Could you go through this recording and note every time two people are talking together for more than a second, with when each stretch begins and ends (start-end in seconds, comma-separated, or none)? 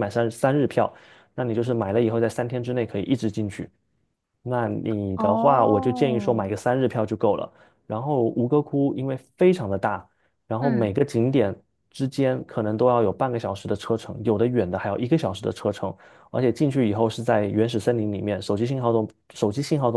5.2-6.5